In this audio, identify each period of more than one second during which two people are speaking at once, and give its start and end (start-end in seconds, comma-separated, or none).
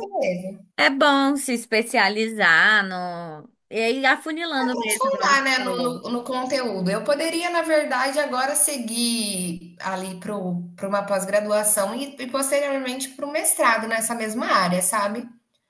4.6-6.0